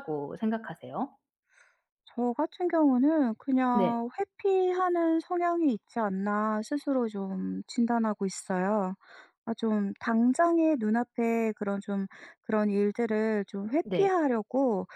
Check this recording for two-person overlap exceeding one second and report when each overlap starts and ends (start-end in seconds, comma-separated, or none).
none